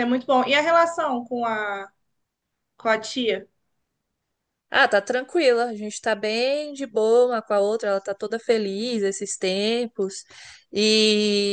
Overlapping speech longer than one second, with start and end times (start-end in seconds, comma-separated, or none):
none